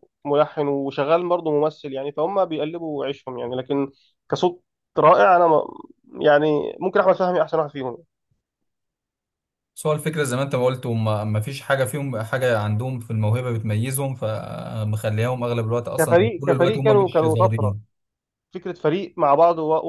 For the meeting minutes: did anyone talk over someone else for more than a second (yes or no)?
yes